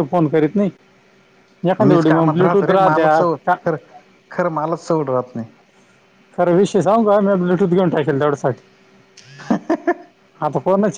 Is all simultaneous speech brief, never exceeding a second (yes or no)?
no